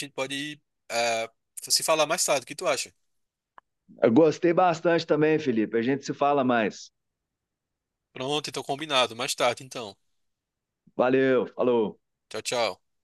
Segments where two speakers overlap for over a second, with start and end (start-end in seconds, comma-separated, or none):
none